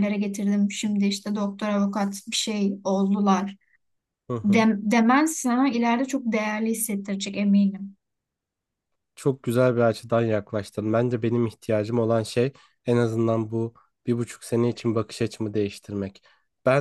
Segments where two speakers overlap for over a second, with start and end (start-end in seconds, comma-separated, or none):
none